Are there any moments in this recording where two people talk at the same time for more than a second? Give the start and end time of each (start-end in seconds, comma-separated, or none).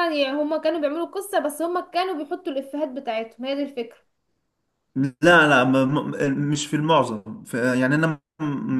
none